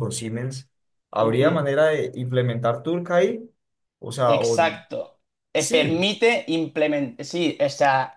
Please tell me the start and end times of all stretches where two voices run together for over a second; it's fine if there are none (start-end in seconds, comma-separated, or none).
none